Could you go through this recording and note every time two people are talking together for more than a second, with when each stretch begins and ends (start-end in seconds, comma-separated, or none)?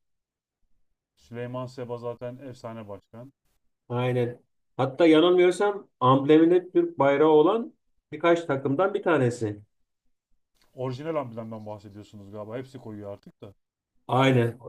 none